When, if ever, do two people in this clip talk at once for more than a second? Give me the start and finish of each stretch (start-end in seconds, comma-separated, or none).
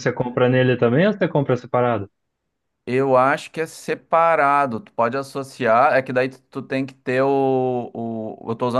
none